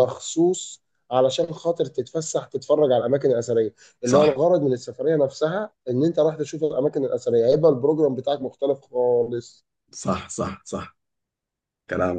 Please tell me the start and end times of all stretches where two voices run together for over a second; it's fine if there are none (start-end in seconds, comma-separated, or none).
none